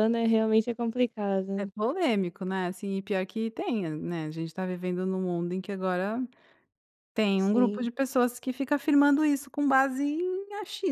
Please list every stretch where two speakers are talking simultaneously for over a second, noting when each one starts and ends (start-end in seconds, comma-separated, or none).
none